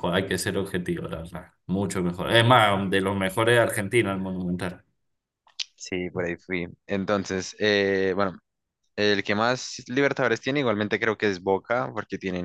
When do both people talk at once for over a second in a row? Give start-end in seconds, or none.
none